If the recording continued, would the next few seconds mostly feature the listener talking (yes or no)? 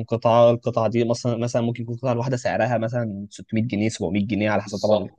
yes